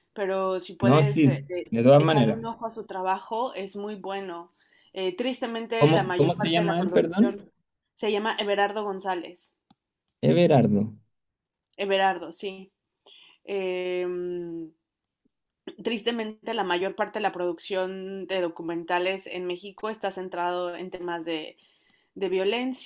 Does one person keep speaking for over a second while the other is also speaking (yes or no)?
yes